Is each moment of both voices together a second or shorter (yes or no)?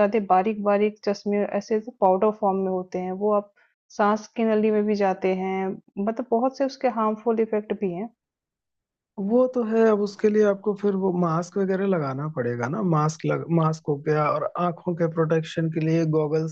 yes